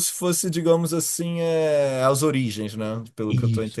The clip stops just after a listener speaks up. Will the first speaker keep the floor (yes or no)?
no